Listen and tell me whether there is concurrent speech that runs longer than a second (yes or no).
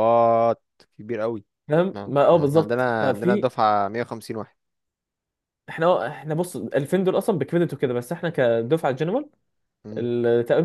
yes